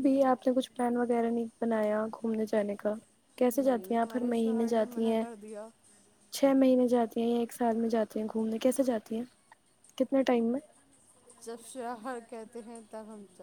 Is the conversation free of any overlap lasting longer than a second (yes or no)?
no